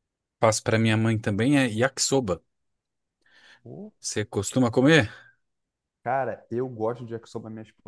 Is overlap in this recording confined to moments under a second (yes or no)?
yes